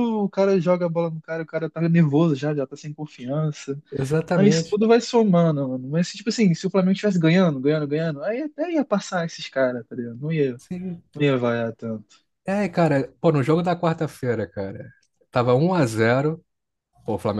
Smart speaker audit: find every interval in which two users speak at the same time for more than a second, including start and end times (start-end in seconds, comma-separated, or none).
none